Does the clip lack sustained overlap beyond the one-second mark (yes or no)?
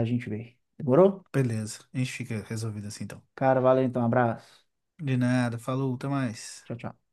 yes